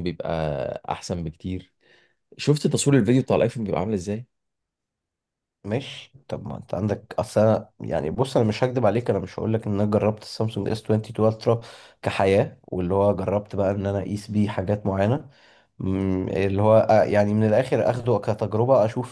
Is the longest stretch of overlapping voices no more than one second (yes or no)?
yes